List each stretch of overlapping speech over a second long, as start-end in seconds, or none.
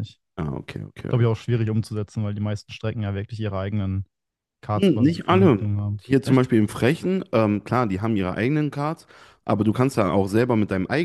4.8-6.5